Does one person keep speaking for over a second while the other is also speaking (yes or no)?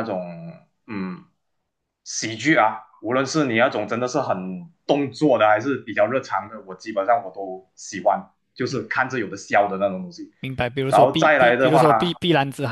yes